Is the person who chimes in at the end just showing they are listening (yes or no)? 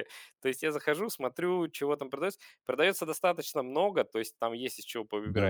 yes